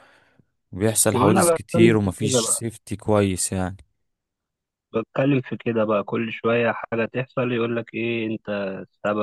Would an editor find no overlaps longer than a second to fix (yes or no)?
no